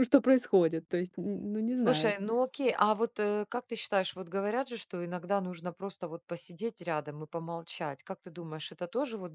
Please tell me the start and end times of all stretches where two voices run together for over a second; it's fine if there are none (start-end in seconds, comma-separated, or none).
none